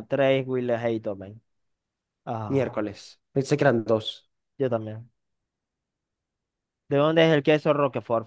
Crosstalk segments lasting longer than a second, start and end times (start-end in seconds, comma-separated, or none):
none